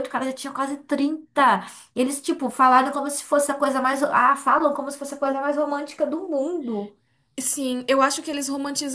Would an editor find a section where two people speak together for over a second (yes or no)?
no